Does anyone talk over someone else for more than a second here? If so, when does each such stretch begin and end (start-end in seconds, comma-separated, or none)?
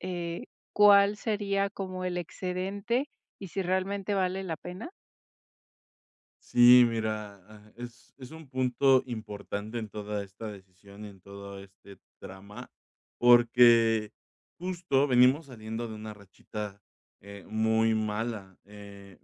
none